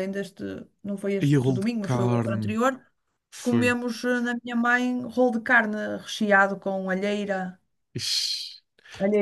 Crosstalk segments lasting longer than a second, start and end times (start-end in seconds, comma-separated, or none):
1.3-2.6